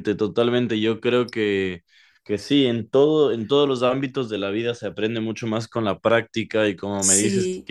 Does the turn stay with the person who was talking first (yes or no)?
yes